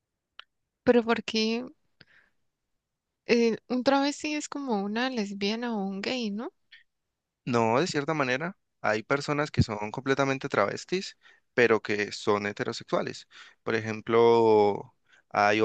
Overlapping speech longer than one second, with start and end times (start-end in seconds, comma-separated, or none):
none